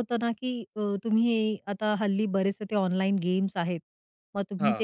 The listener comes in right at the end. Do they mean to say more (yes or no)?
no